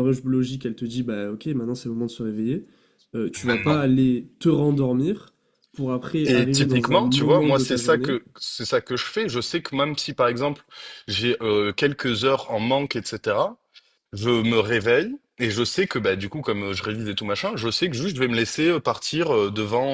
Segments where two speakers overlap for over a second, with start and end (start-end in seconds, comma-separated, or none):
6.2-8.2